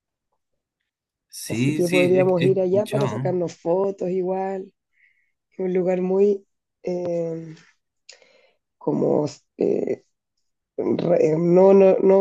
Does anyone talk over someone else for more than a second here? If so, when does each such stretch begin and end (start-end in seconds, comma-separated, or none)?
1.5-3.4